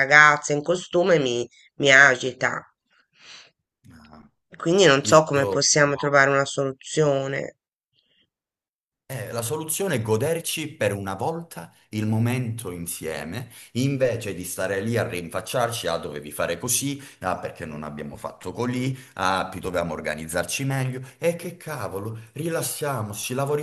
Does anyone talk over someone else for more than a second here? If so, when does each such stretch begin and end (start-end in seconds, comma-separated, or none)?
none